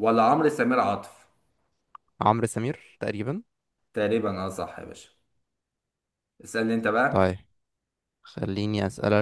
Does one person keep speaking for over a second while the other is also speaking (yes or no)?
no